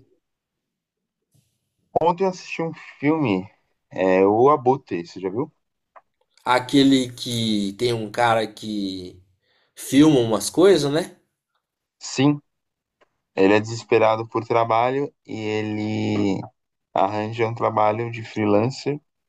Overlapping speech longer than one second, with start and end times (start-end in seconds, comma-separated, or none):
none